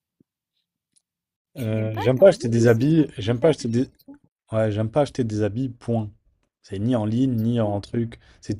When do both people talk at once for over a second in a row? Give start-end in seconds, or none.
1.6-3.9